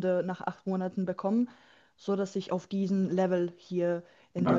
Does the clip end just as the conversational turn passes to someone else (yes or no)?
yes